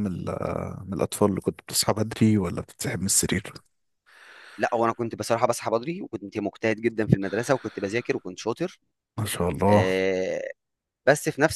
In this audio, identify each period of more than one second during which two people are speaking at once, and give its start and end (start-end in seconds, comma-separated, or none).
none